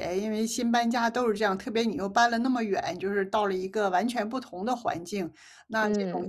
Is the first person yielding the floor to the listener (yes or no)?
no